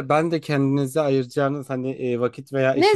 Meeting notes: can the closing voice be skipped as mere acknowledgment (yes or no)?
no